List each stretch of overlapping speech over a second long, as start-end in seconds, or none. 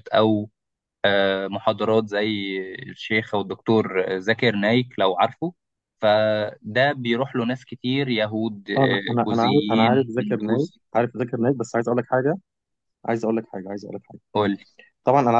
8.8-10.8